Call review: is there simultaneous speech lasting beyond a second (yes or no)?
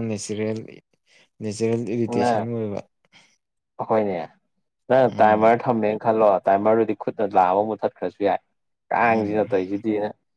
no